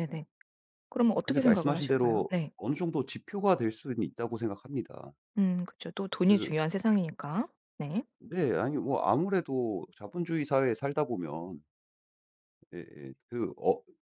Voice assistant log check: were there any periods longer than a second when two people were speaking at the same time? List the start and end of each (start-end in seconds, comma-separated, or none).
1.2-2.5